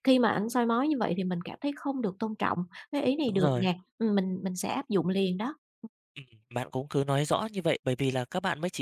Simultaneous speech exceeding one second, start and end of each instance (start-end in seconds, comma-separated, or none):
none